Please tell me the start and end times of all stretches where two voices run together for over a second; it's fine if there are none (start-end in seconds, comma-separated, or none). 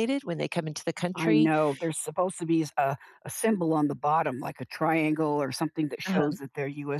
none